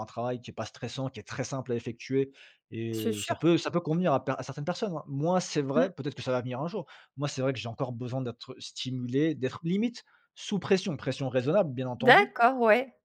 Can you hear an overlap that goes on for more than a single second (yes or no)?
no